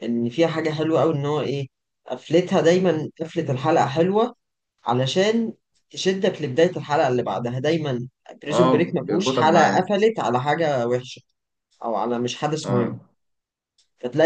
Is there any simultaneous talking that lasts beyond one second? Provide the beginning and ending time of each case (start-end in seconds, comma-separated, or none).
8.5-9.8